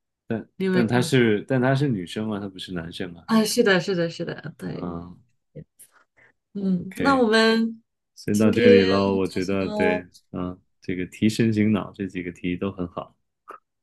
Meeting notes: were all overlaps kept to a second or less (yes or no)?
no